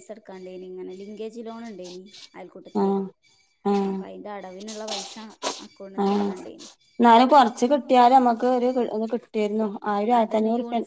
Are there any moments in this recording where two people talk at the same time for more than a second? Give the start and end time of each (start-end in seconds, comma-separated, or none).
none